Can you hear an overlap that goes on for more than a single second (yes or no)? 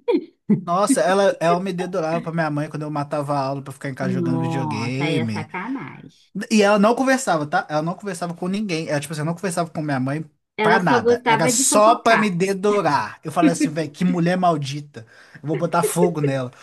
yes